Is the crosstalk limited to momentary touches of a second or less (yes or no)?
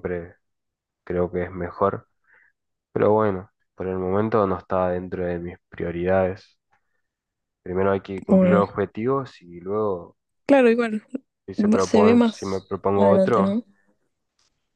no